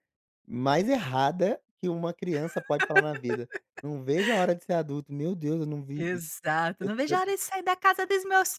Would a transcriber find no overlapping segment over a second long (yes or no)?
yes